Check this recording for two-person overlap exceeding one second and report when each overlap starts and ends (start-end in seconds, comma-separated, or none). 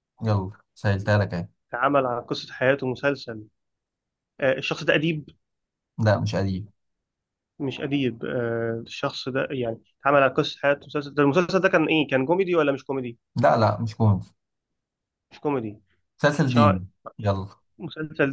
none